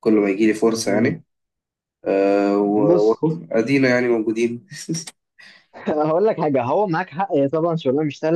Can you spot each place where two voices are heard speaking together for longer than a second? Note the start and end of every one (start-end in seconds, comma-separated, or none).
none